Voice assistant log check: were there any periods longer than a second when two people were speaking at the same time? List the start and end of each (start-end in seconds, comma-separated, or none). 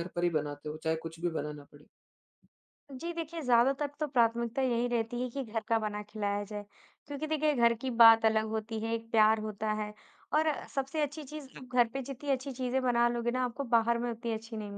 none